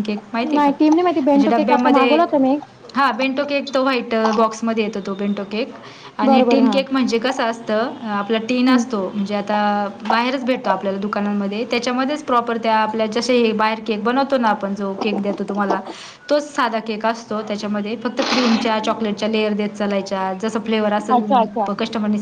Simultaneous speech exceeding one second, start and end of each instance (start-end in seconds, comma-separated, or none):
0.6-2.2